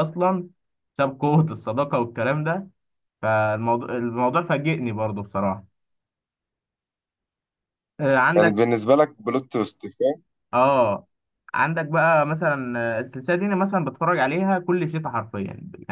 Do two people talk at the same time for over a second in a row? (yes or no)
no